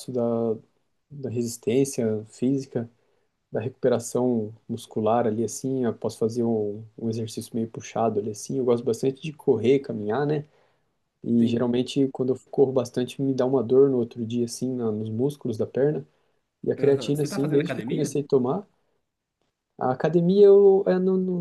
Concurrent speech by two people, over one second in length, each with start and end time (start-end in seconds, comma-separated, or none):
16.8-18.1